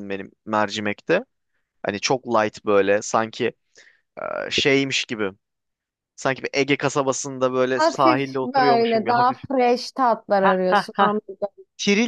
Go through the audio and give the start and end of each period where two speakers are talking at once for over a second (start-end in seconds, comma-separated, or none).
7.8-9.4